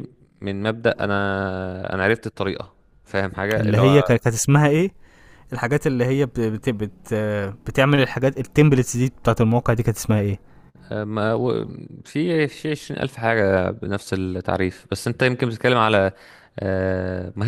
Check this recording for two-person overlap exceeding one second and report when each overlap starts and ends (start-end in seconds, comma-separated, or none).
none